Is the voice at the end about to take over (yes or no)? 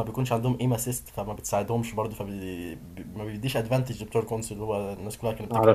yes